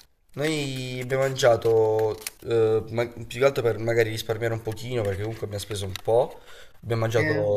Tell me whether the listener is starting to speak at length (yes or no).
no